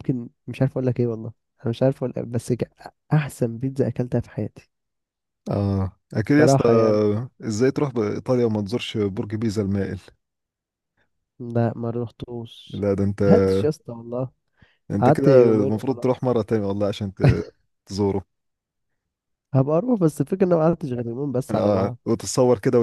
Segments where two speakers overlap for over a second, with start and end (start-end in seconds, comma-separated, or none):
15.0-16.3